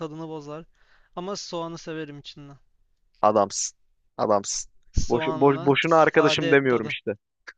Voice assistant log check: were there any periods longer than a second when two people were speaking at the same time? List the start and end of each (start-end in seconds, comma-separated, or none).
5.1-7.0